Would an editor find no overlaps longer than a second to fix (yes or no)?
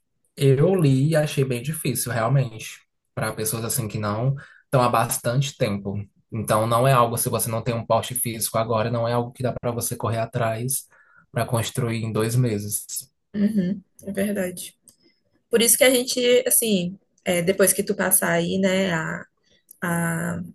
yes